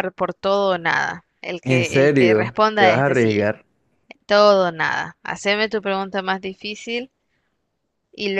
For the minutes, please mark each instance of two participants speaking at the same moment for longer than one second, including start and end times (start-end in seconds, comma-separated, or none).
1.6-3.5